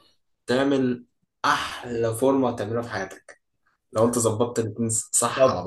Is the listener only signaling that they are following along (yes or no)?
no